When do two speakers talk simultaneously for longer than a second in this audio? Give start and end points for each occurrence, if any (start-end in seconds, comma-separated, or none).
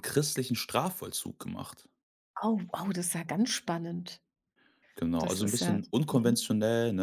5.2-6.5